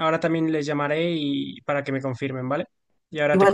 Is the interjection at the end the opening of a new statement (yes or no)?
yes